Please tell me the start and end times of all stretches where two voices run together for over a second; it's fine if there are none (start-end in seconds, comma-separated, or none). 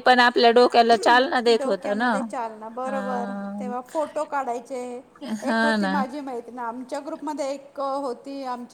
none